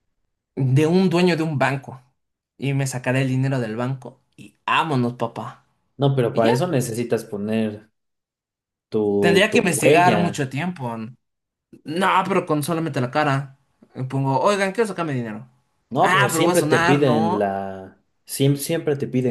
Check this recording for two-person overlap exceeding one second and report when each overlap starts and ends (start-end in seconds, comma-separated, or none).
9.2-10.4, 16.0-17.5